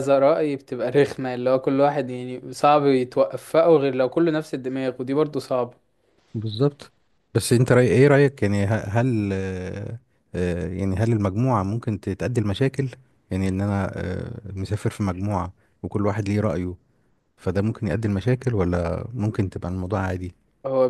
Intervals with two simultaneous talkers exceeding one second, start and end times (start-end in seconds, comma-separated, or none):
none